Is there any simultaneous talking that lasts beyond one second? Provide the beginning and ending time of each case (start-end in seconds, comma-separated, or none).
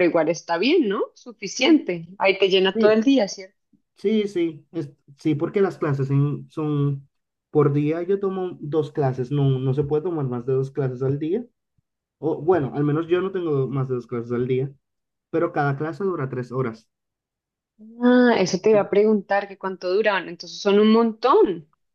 none